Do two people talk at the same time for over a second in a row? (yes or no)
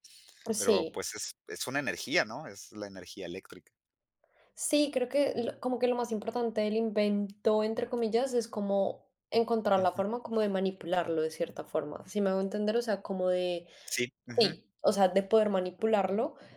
no